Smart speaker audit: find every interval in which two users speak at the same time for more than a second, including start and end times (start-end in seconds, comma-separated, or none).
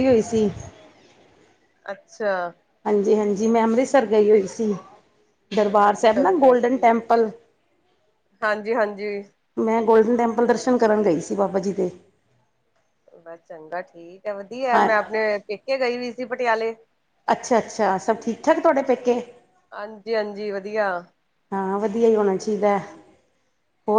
5.6-7.3